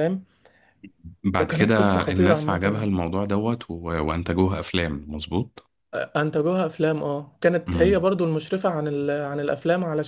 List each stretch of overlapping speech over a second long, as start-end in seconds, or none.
1.5-2.9